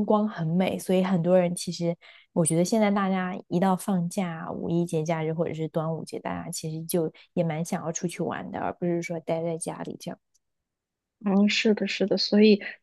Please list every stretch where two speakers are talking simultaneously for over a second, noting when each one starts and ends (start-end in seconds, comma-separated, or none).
none